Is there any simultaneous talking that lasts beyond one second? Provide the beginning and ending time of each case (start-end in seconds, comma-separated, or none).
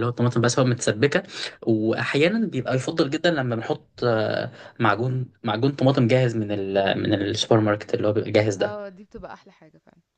none